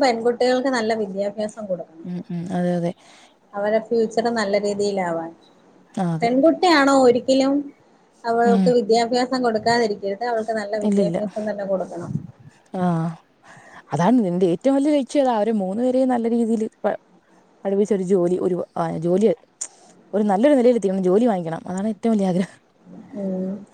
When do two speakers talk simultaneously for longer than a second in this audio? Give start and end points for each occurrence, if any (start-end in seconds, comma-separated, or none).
none